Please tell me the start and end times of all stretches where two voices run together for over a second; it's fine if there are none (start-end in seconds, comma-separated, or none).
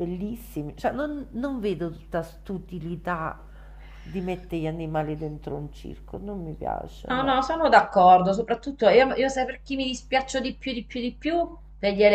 none